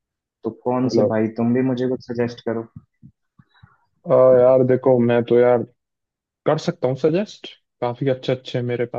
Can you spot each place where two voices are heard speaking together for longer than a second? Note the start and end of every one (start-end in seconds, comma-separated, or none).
none